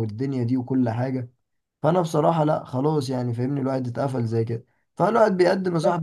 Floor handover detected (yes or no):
no